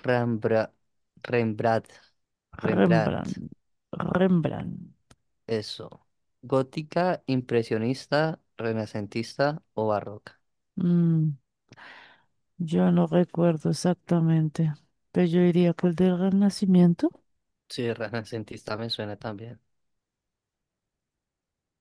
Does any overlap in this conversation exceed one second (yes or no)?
no